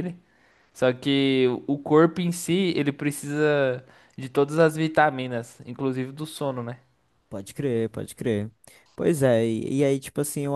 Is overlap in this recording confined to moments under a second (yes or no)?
yes